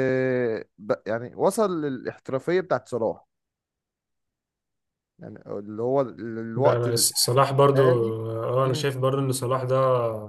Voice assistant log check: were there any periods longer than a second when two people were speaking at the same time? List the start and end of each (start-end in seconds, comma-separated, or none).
6.5-7.8